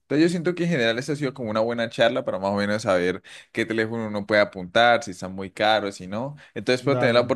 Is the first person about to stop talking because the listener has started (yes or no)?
no